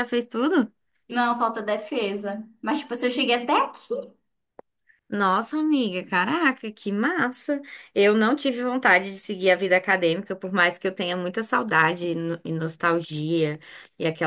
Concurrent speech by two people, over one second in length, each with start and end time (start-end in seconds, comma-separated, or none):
none